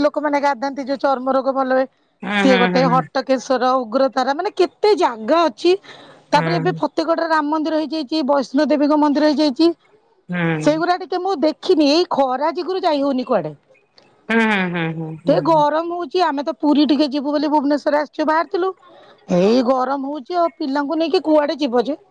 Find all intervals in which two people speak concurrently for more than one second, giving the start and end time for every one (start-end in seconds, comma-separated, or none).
none